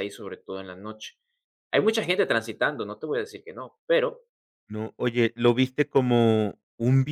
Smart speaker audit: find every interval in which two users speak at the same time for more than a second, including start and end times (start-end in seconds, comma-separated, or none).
none